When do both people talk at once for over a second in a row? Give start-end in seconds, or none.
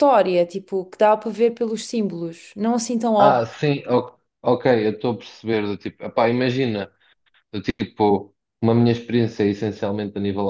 none